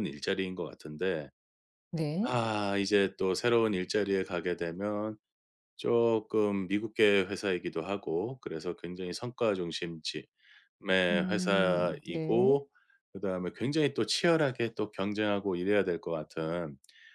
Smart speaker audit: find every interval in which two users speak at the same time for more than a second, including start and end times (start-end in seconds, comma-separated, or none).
11.3-12.6